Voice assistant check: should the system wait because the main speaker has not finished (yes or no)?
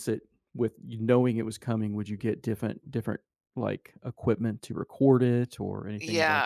no